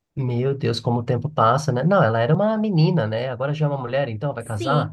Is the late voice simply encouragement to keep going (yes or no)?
no